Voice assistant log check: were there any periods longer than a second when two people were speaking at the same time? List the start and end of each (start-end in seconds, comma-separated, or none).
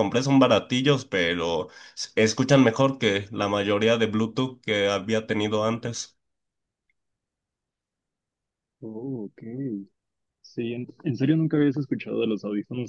none